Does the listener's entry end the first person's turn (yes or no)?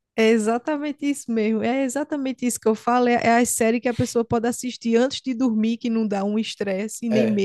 no